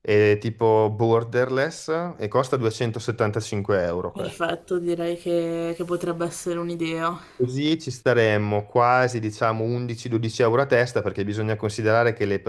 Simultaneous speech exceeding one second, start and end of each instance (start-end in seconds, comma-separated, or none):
none